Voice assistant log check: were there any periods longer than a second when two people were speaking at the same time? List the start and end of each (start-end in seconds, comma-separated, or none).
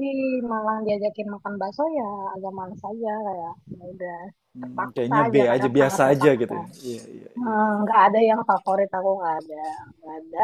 4.6-6.6